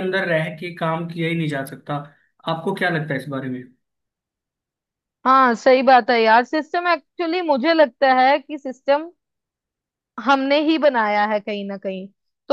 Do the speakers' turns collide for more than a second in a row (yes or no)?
no